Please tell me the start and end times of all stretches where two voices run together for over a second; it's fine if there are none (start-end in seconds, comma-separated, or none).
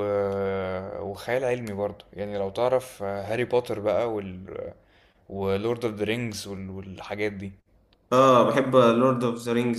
none